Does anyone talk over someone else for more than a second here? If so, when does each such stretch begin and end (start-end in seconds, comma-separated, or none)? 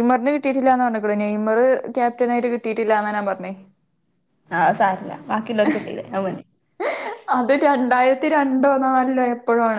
none